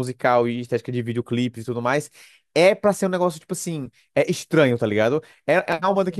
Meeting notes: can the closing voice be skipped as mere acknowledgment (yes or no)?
yes